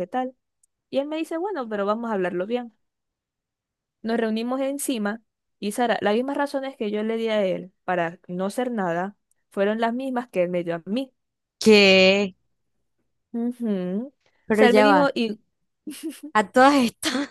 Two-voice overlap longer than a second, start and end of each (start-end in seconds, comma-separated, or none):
none